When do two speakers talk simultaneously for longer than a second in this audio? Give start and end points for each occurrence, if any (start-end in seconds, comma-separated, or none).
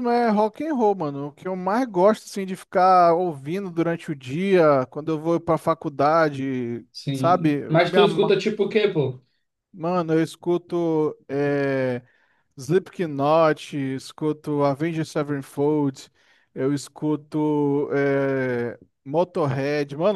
6.9-8.4